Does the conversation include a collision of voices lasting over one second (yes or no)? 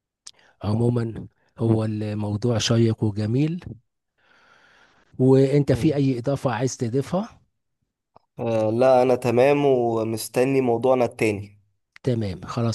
no